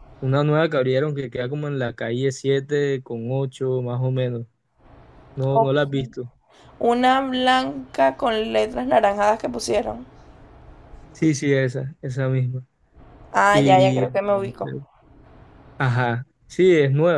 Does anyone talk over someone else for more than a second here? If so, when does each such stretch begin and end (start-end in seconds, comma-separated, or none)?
13.5-14.7